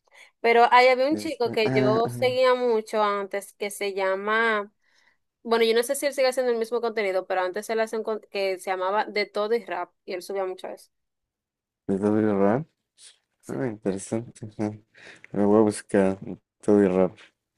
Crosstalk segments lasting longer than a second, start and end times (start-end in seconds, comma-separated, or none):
1.1-2.4